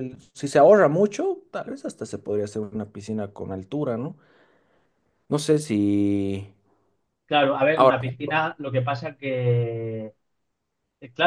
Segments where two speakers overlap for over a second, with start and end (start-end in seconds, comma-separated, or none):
none